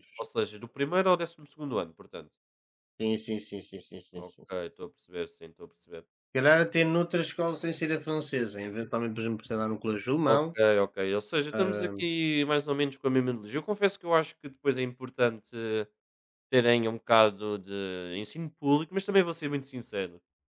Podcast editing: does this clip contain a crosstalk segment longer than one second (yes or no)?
no